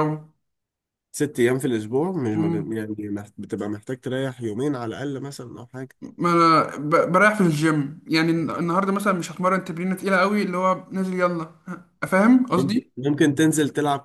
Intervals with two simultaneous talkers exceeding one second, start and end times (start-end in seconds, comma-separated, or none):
none